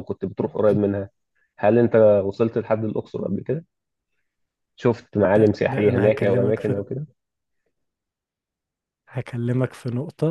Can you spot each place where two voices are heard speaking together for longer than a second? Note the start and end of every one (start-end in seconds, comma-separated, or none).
5.3-6.8